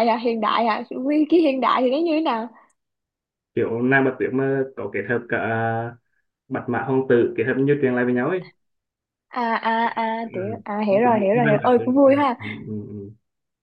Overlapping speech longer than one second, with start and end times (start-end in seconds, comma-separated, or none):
10.2-12.4